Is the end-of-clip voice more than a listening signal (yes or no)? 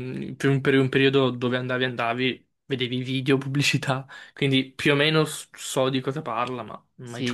yes